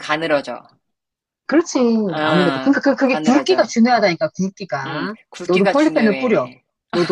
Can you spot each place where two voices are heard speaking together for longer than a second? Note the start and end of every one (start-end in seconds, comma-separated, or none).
2.2-3.6, 4.8-6.5